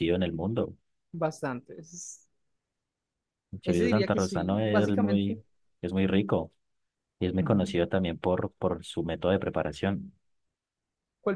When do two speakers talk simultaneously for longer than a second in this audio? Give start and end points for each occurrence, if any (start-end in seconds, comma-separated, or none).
3.6-5.4